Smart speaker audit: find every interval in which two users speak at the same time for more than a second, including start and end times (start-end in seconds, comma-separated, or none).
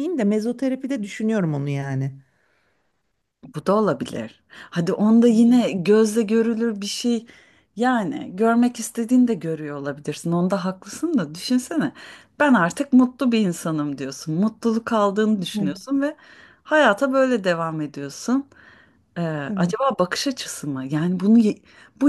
none